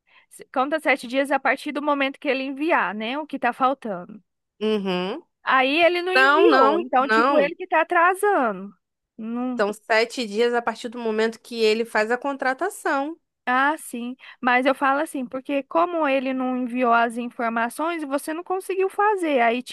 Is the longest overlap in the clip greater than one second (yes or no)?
yes